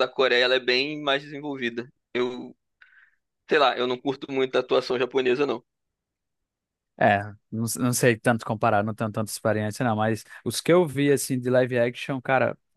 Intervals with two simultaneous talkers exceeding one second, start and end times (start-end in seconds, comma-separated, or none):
none